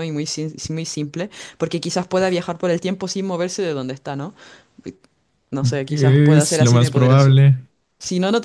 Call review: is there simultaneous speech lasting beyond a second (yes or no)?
yes